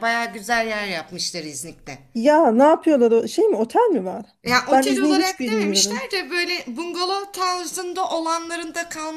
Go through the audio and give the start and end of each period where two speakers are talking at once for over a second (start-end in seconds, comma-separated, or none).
4.7-6.0